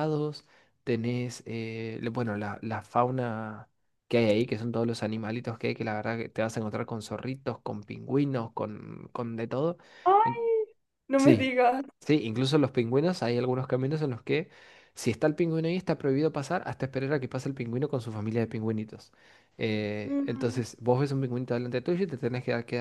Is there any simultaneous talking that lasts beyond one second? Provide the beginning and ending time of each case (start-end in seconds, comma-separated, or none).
none